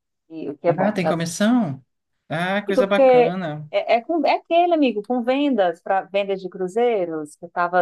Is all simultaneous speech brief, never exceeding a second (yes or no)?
yes